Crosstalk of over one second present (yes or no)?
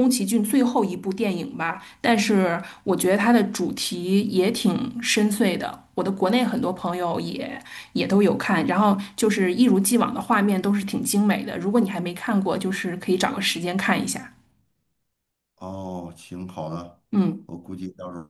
no